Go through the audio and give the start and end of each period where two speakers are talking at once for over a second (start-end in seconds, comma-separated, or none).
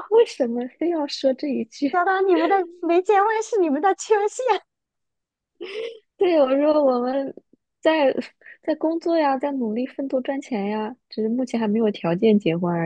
none